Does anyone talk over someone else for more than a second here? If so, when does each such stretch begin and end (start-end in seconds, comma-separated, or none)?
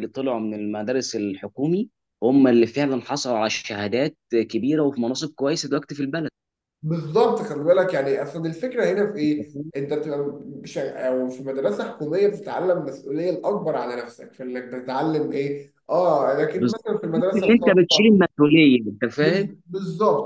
16.6-18.2